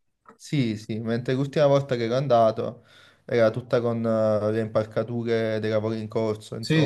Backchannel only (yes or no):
no